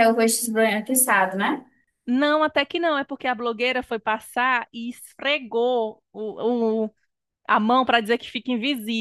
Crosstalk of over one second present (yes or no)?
no